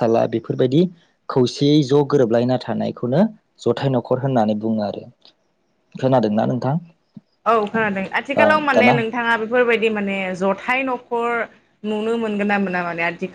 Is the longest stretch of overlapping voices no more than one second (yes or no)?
yes